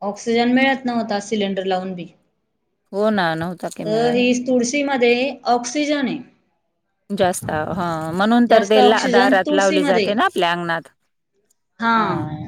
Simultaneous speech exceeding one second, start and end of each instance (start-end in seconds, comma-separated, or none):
8.5-10.2